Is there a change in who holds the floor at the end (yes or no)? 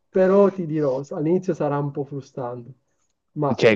yes